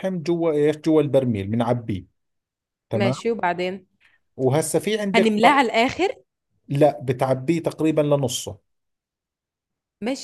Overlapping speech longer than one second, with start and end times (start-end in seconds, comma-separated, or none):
none